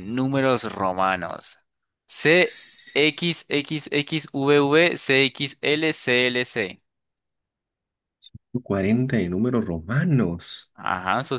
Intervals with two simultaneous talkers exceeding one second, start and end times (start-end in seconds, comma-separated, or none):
none